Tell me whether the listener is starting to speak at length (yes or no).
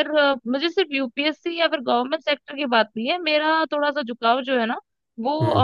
no